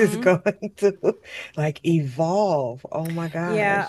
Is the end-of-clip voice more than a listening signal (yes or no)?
yes